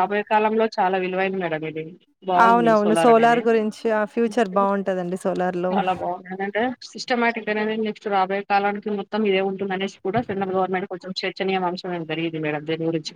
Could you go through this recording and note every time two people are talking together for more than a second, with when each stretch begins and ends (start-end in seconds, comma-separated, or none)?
none